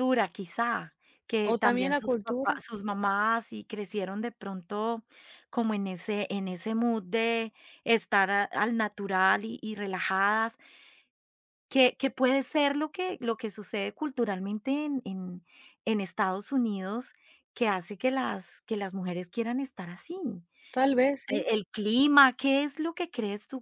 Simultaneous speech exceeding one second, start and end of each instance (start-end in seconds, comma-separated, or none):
1.4-2.6